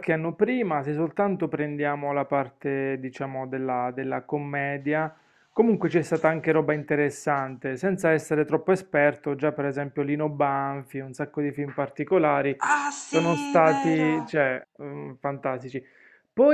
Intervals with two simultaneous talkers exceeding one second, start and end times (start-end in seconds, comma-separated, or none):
13.1-14.3